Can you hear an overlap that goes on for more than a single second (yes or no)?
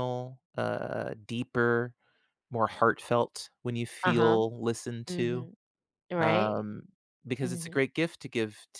no